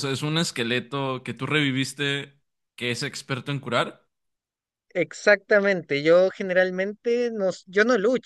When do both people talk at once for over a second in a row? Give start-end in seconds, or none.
none